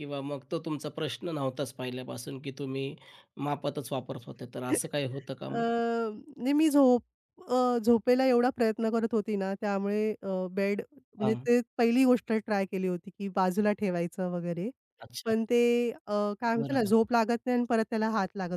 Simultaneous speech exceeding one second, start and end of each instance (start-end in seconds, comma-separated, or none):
none